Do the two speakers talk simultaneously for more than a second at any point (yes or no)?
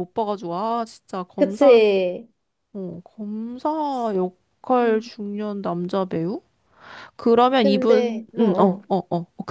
yes